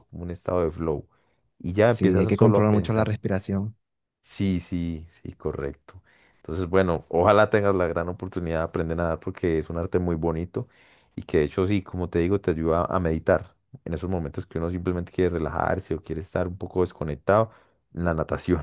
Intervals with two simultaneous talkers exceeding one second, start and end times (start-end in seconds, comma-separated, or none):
1.9-3.2